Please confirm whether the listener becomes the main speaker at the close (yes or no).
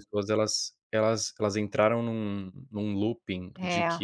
no